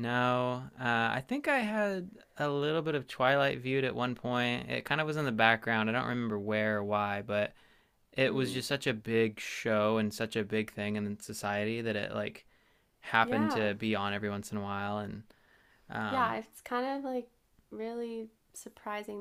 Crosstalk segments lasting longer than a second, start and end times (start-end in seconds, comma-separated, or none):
none